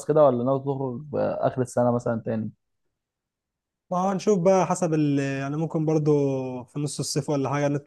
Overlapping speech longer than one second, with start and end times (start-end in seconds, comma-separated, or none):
none